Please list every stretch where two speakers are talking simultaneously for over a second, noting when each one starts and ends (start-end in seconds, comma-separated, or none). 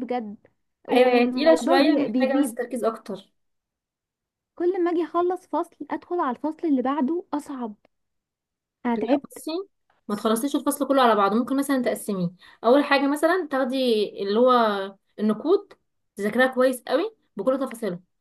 0.9-2.6